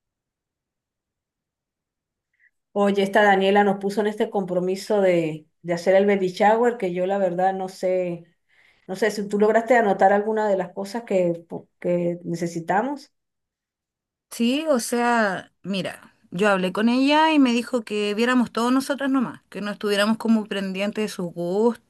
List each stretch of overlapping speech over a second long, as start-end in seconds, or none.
none